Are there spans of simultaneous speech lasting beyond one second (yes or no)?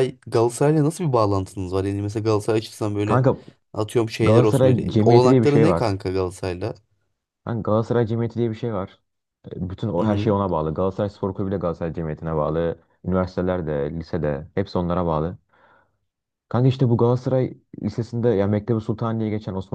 yes